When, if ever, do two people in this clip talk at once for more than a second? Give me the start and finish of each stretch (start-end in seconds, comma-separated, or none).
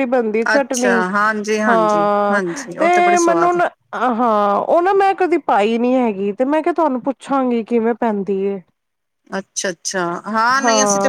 1.7-3.6